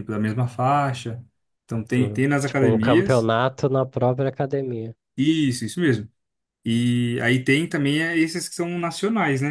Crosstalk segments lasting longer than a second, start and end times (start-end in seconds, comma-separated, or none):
1.9-3.3